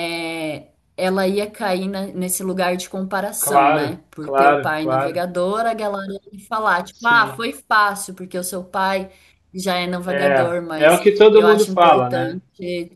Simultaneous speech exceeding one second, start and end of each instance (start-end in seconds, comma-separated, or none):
3.4-5.2, 10.1-12.4